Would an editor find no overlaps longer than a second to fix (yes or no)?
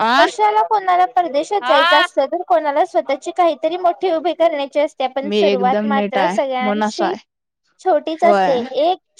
no